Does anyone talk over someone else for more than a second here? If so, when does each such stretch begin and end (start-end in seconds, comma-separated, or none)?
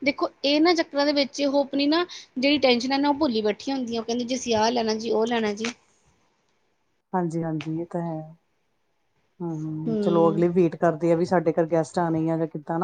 none